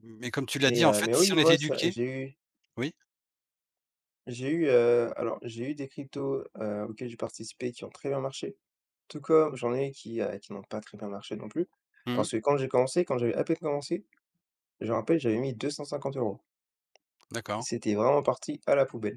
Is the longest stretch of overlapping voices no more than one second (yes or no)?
no